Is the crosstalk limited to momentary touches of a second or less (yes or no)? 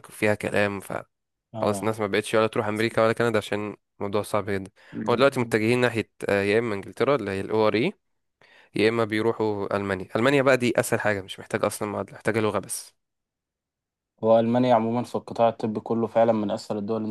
yes